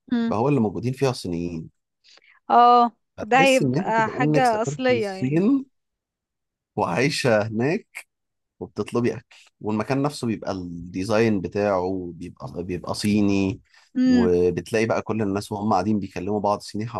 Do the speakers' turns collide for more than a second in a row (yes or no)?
yes